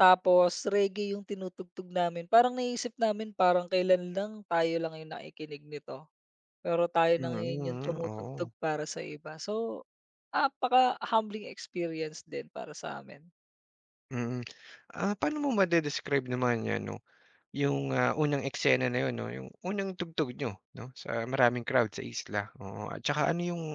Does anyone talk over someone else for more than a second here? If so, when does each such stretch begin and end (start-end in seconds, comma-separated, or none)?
7.2-8.5